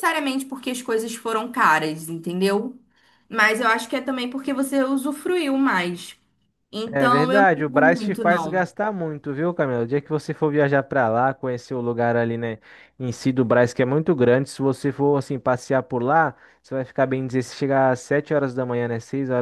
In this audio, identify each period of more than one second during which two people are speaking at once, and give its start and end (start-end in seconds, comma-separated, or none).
6.9-8.6